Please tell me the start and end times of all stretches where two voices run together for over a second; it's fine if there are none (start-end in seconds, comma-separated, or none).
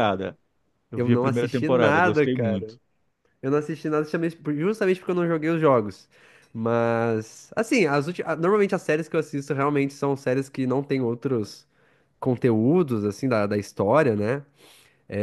0.9-2.7